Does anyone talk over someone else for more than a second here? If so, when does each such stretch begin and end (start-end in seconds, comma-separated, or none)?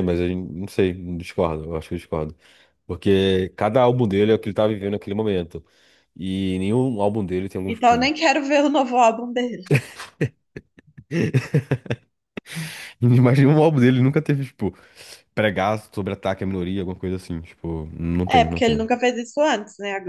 none